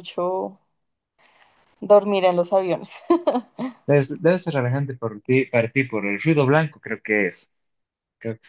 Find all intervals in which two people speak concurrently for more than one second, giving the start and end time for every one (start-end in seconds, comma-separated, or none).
none